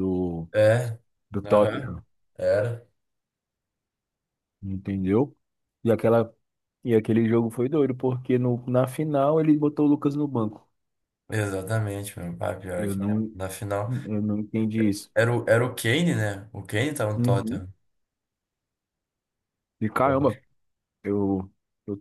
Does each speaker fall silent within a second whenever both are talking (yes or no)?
yes